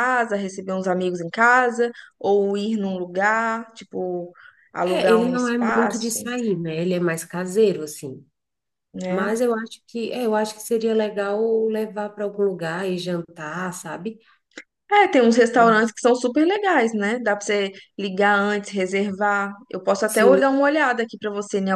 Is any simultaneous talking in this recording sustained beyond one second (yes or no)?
yes